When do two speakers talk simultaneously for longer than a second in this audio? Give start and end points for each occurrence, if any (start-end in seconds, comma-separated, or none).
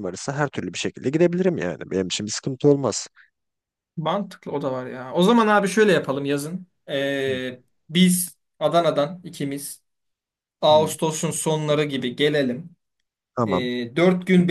none